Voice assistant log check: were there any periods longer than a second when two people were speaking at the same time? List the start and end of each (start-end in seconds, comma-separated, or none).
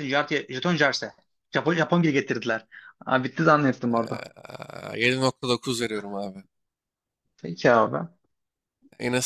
none